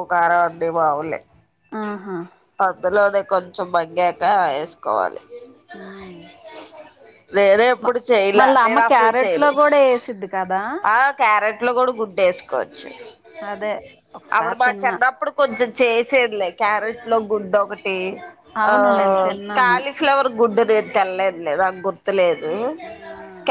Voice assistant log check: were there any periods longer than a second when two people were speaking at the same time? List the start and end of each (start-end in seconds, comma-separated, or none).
none